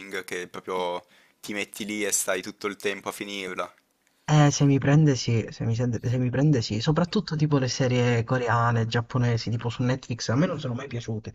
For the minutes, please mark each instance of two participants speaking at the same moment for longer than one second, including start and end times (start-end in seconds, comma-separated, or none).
none